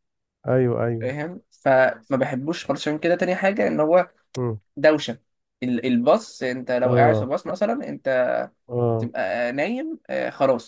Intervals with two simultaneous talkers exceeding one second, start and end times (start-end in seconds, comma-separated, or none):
none